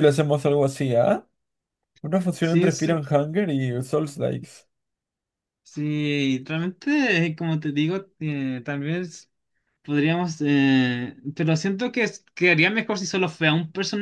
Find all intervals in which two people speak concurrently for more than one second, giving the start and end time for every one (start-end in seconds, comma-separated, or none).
none